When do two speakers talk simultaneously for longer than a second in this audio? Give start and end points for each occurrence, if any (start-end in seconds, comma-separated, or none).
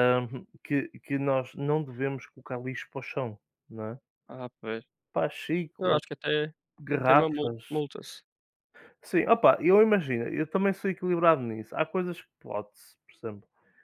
none